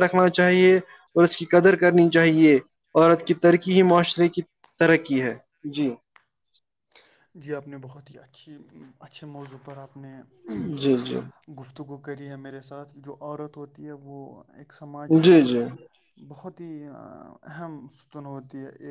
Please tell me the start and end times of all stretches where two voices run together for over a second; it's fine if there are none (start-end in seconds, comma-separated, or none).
none